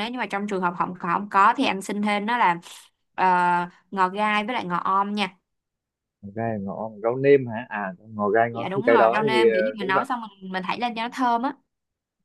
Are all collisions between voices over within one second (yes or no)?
no